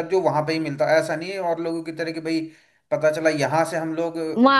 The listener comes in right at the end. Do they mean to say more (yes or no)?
yes